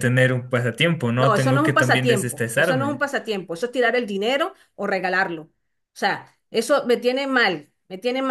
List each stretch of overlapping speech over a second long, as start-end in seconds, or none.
1.2-3.0